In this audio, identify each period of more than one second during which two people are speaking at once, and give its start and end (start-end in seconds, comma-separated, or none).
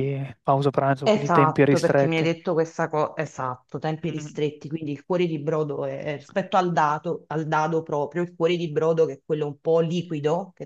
1.0-2.3